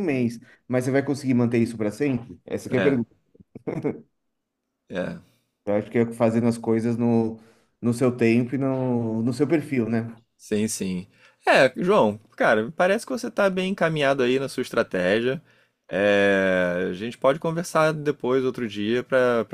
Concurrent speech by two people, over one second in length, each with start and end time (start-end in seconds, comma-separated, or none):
none